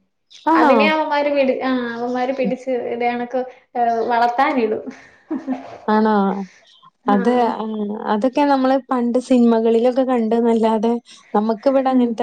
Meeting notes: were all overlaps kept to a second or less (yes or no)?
yes